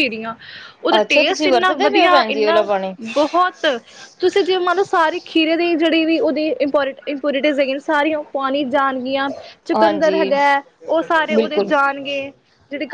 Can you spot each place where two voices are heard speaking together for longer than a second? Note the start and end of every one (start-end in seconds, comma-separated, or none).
1.0-2.7